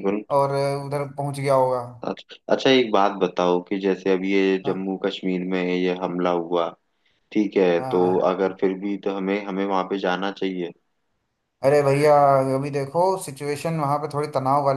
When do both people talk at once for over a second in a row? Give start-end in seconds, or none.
none